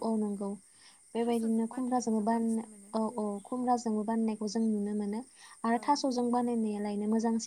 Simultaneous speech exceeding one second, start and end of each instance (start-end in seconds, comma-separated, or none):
1.2-2.6